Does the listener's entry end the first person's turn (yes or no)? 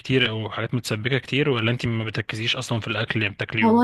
yes